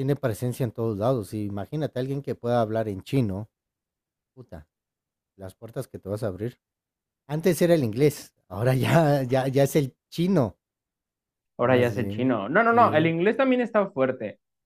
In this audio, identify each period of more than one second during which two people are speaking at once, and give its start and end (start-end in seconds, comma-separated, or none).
11.6-13.1